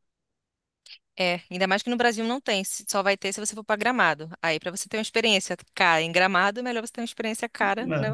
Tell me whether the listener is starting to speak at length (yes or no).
yes